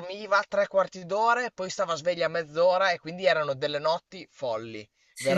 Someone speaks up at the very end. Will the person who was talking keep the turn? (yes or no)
yes